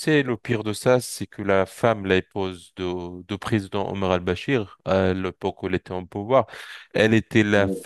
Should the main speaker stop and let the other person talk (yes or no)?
no